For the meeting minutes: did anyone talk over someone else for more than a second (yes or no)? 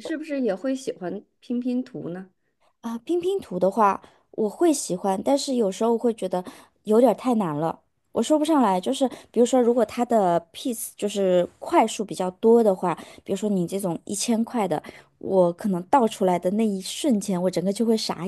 no